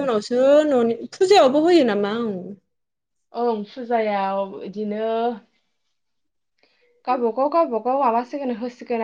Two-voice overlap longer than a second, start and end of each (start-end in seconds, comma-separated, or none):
none